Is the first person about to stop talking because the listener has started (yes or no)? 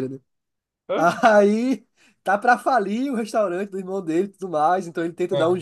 no